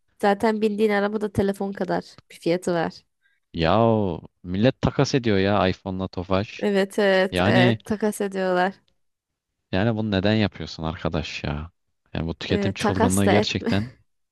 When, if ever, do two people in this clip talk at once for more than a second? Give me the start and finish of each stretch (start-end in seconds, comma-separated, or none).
12.5-13.7